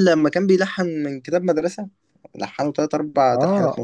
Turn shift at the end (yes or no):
yes